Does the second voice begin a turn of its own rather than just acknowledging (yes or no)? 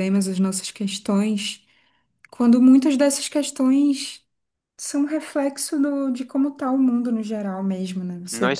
yes